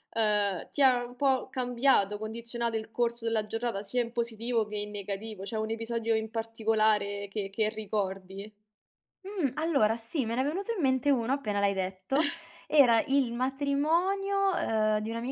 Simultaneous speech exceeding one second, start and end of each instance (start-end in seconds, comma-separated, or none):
none